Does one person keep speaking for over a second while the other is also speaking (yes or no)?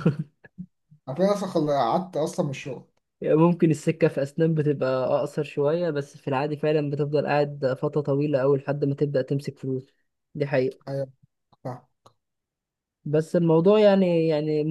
no